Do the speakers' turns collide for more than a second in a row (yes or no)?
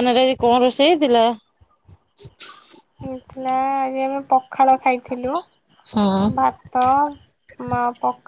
no